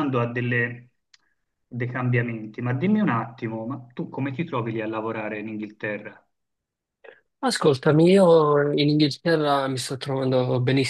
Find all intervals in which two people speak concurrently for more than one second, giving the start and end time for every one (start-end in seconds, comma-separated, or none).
none